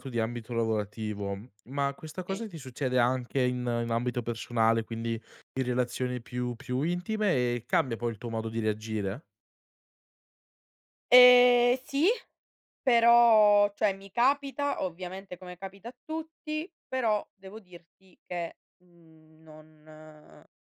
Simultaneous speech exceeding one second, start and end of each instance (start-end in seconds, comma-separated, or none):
none